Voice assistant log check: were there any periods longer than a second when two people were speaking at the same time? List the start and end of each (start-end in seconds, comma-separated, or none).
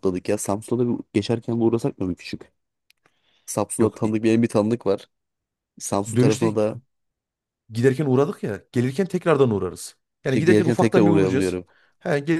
10.3-11.6